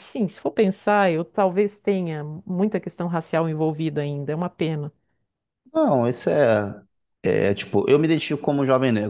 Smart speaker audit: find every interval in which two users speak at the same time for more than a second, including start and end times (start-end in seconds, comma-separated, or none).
none